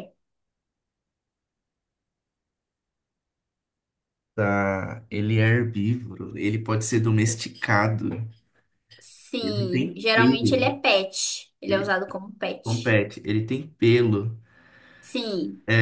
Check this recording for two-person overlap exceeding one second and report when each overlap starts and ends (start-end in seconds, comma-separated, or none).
9.4-10.7